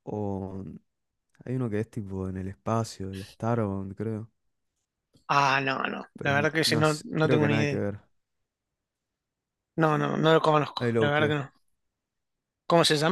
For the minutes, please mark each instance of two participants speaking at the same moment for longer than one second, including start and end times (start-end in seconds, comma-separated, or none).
6.2-7.8